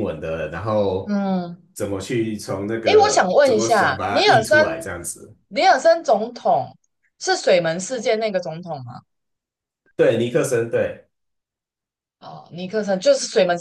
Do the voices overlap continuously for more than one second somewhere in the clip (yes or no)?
yes